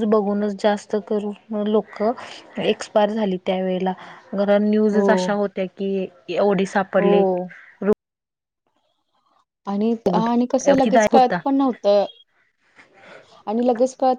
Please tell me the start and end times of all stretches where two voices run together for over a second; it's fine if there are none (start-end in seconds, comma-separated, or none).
10.0-11.4